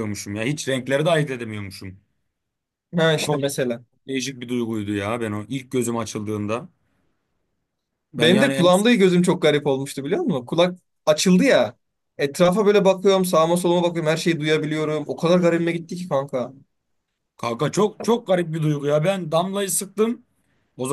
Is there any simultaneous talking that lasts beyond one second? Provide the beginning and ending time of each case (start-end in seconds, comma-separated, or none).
none